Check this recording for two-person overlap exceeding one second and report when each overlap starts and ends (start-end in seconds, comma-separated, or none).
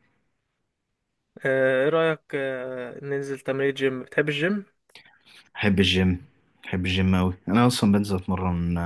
none